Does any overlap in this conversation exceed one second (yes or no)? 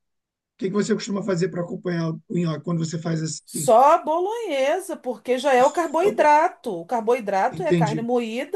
no